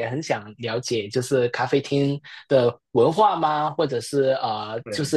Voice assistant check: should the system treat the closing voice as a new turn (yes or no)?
no